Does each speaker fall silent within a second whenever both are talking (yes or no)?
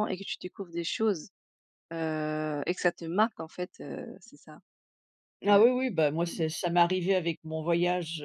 yes